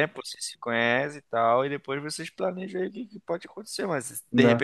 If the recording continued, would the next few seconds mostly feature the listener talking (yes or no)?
no